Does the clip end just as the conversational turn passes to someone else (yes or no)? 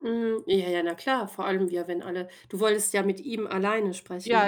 yes